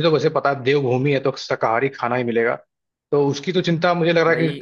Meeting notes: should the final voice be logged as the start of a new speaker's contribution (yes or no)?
no